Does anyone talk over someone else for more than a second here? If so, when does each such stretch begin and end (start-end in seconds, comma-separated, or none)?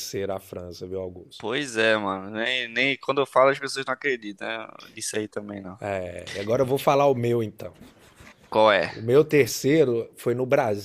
none